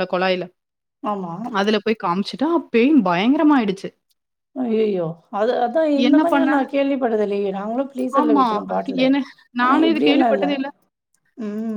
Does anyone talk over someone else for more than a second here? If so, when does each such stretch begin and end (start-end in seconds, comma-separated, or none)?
none